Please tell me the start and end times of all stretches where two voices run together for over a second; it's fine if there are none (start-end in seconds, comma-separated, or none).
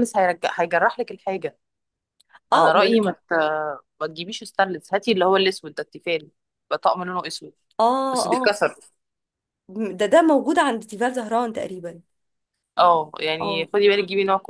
none